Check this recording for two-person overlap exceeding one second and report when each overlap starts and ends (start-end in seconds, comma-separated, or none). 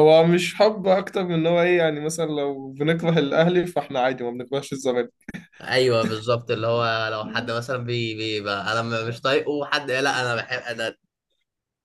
none